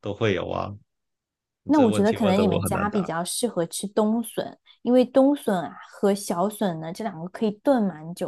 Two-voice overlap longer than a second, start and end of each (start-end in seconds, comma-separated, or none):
1.7-3.1